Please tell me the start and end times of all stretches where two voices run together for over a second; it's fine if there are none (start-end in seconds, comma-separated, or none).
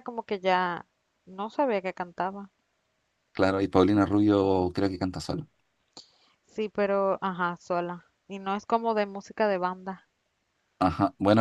none